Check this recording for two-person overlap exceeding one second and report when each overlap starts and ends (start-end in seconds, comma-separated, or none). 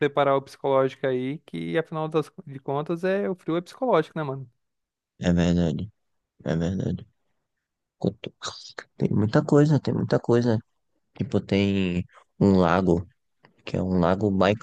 none